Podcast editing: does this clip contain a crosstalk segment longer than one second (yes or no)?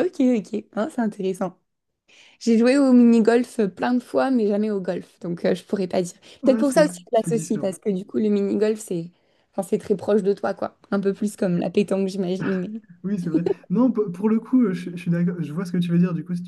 yes